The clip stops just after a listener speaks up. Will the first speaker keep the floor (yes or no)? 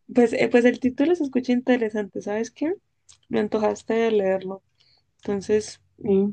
no